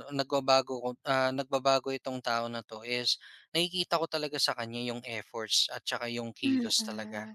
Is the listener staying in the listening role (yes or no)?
no